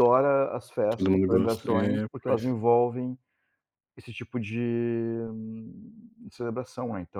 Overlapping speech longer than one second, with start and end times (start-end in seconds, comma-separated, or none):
0.9-2.5